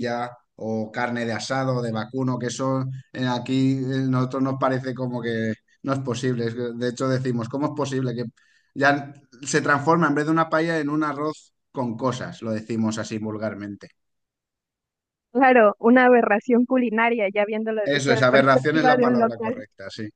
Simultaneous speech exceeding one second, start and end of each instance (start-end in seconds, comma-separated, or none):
17.8-19.6